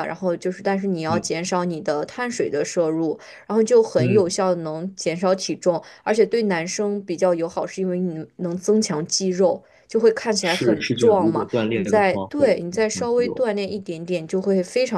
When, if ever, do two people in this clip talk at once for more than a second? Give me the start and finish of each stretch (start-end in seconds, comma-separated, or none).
10.4-13.4